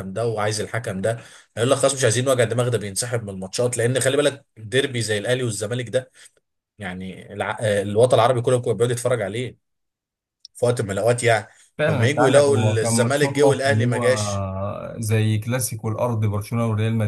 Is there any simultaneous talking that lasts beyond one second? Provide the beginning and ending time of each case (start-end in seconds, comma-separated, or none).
11.9-14.1